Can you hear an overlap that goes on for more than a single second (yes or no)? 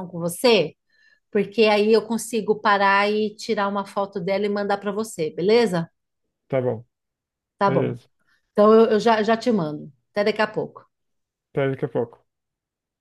no